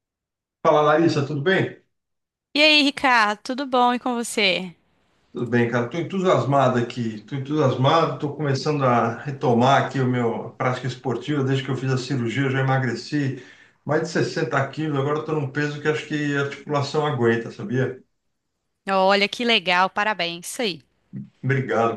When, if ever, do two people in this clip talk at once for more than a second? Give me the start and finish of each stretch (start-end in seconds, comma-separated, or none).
none